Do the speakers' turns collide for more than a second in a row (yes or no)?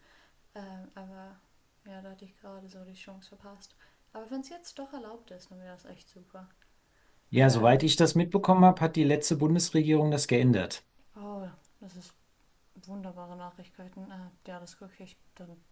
no